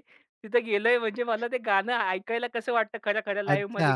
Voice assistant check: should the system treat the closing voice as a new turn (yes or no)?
yes